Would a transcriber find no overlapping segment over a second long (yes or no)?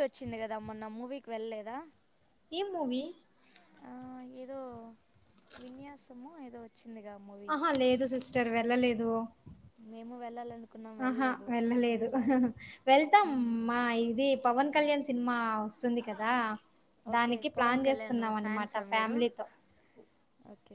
no